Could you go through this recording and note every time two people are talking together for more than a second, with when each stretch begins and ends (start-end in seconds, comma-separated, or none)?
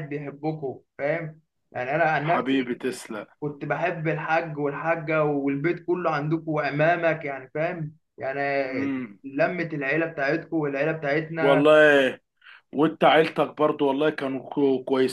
none